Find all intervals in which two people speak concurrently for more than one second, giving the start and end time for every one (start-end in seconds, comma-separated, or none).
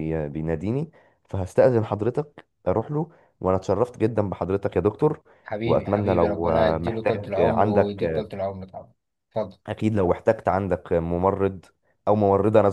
5.6-8.3